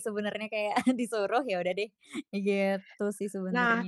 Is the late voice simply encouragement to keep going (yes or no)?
no